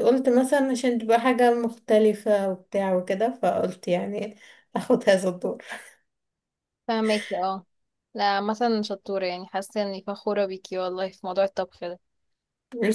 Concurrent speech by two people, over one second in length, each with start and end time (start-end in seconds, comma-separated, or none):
none